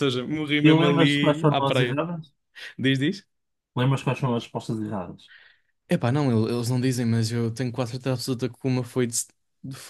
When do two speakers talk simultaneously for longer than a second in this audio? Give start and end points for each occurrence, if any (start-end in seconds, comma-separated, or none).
0.6-2.0